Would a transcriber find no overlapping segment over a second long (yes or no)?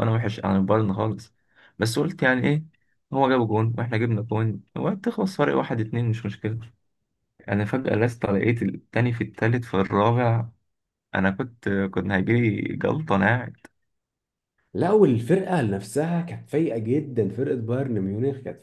yes